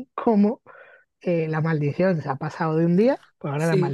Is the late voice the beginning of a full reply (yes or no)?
no